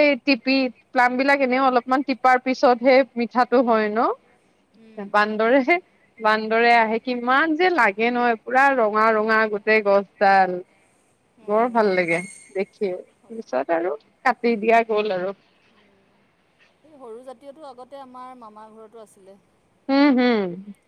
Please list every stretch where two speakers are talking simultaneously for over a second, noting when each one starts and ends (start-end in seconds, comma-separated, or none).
none